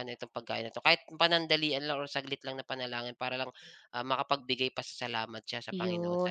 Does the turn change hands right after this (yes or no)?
yes